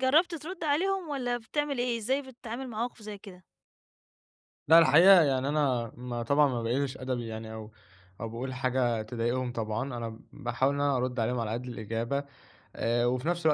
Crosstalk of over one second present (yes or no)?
no